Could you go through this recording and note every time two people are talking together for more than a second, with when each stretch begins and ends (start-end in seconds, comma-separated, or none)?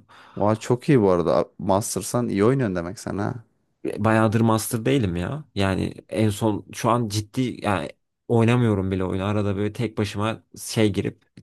none